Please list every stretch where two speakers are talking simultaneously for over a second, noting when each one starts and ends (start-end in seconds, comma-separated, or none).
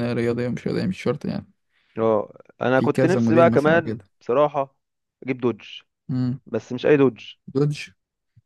2.8-4.0